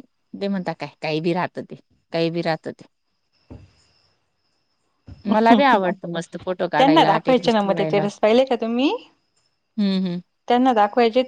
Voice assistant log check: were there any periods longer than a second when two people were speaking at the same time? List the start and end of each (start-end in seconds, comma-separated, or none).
6.8-8.0